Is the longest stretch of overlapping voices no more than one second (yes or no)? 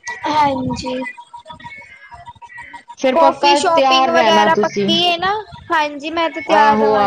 no